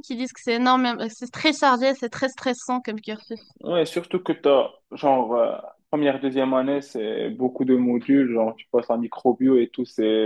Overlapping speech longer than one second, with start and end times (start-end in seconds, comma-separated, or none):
none